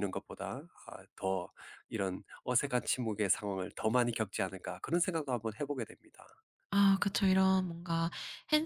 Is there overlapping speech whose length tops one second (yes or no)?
no